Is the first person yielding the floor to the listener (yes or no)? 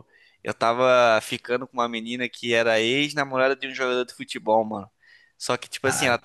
no